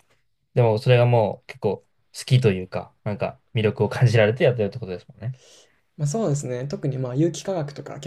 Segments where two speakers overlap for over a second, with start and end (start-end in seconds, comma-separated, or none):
none